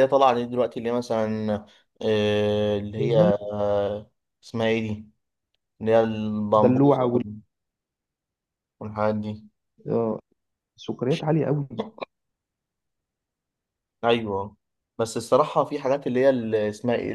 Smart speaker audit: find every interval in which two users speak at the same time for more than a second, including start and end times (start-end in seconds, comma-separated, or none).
none